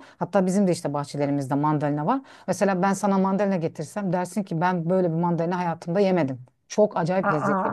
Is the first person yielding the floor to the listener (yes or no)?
no